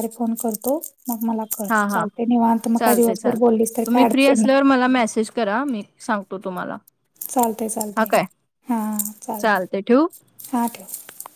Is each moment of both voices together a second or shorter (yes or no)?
no